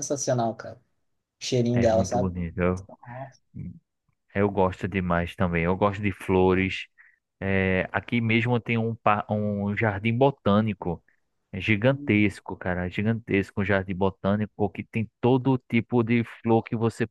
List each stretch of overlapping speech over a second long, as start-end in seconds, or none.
none